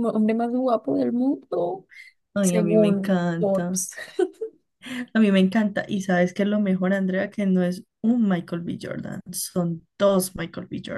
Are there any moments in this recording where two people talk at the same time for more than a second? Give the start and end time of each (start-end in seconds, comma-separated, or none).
2.4-3.9